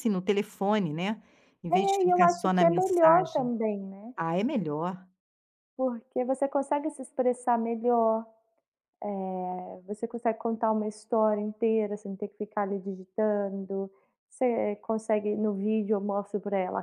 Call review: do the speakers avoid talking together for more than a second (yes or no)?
no